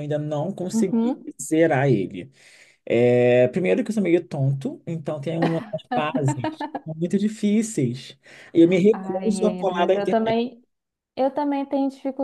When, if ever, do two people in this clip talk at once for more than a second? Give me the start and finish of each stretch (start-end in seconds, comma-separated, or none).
8.9-10.4